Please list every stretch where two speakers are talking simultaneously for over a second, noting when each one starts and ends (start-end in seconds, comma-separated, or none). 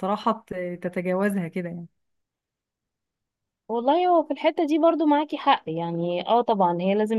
none